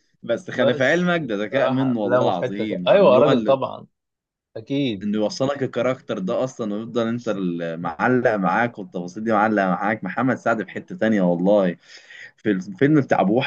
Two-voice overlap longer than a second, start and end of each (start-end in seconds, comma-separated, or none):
0.6-3.6